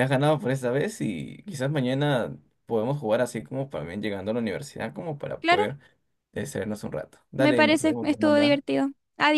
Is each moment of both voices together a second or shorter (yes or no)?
no